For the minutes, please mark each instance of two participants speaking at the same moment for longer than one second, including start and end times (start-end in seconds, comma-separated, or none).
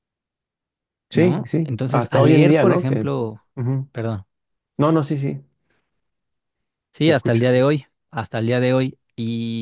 1.1-3.1